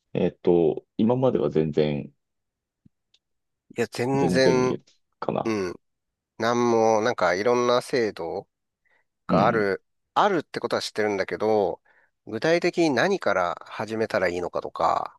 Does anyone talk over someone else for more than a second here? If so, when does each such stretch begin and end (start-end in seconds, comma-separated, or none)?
none